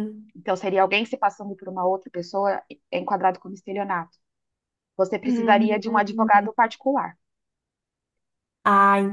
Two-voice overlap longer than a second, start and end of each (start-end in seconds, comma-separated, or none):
5.2-6.5